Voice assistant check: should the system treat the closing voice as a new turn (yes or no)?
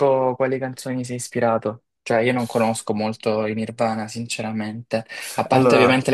no